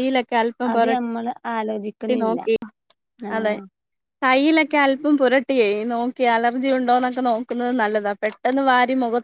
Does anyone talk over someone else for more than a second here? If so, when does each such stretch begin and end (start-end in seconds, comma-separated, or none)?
0.7-2.4